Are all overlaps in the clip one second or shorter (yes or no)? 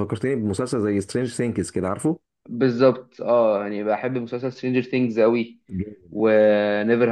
yes